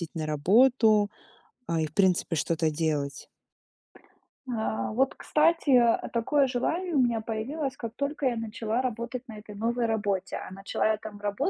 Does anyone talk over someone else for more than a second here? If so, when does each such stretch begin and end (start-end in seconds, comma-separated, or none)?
none